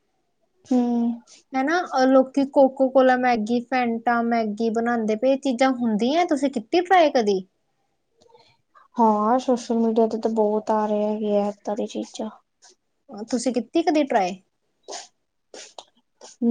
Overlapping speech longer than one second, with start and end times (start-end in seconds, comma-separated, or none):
none